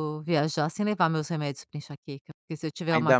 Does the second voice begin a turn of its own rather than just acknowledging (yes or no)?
yes